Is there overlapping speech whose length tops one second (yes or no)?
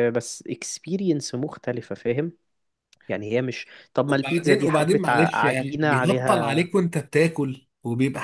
yes